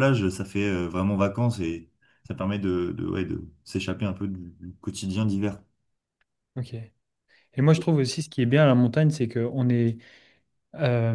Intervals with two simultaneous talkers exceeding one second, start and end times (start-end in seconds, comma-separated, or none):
none